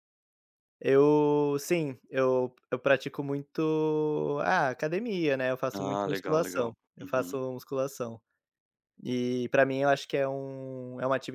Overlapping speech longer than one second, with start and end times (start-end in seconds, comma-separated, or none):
5.7-7.4